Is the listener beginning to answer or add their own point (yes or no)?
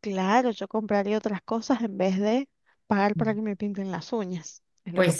yes